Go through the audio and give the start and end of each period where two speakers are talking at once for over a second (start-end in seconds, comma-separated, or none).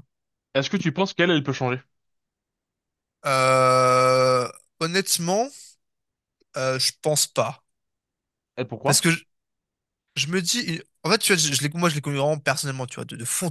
none